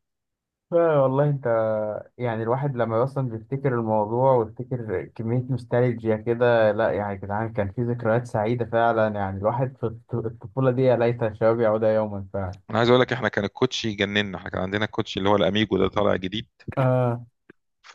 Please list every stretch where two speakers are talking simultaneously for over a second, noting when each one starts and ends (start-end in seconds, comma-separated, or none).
none